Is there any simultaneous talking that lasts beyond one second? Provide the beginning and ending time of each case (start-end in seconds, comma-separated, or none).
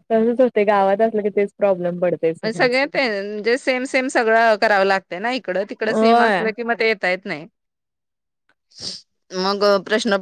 none